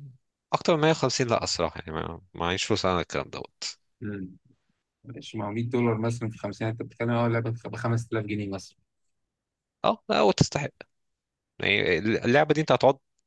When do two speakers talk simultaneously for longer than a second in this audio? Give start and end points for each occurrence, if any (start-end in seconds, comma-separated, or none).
none